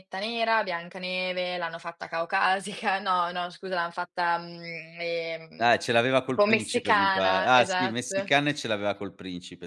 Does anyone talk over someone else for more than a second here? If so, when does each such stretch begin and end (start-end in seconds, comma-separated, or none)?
6.3-8.3